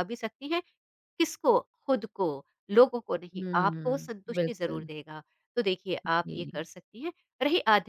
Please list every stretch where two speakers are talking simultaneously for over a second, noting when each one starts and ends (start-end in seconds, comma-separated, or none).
3.3-4.9